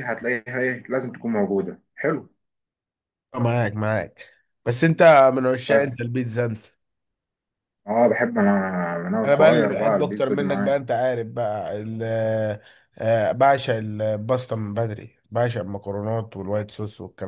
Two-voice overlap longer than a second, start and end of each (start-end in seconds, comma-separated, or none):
9.2-10.8